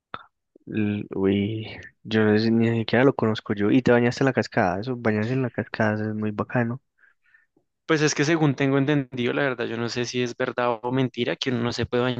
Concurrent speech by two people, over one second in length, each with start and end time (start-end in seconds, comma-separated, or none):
none